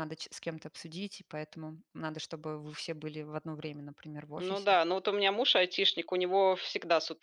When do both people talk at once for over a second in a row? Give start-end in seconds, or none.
none